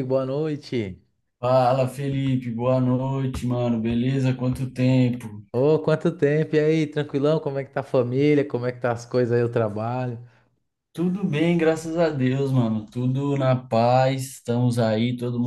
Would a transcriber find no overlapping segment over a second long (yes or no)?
yes